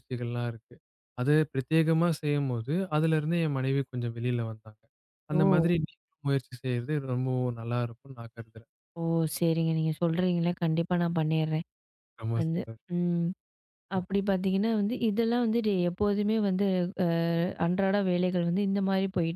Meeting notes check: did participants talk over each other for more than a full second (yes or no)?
no